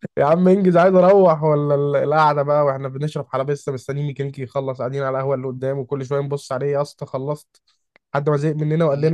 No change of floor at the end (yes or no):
yes